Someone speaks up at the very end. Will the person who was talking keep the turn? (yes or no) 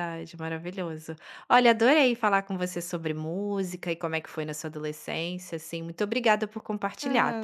no